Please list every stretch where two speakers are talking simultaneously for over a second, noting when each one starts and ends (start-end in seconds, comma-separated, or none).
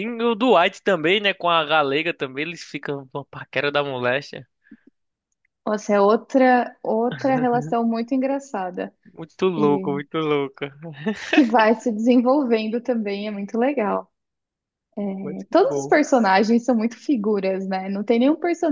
none